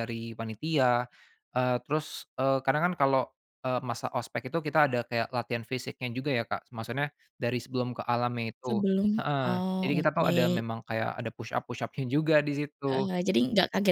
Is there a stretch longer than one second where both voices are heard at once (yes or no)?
yes